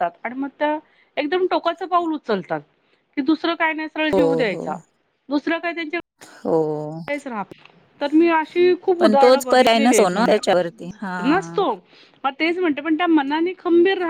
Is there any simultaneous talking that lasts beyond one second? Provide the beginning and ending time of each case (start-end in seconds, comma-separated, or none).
9.0-11.6